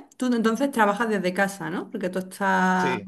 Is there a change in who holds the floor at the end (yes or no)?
no